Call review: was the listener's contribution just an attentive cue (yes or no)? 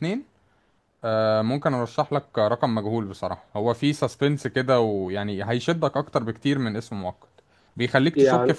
yes